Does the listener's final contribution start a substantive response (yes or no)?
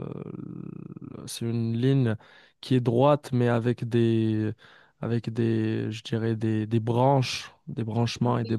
no